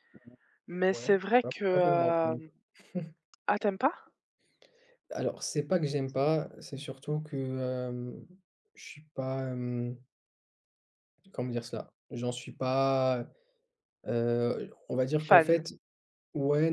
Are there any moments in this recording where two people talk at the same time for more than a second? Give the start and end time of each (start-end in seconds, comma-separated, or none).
0.9-2.5